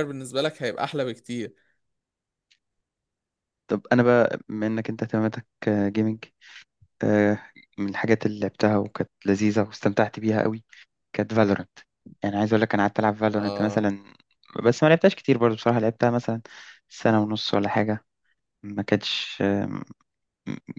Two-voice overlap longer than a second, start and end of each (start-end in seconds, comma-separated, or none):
none